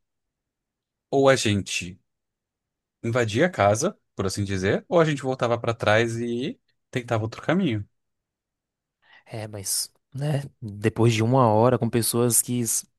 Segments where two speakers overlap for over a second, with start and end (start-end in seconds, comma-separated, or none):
none